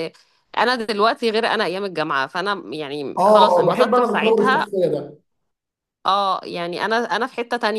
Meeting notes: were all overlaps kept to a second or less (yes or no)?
no